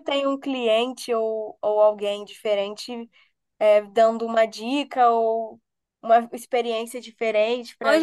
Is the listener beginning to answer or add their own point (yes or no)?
yes